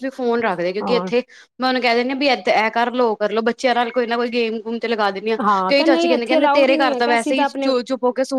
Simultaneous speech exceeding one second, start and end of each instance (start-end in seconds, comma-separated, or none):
5.7-7.7